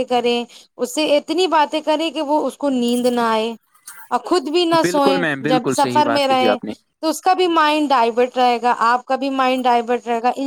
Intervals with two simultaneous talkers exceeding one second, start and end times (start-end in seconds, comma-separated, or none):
4.8-6.6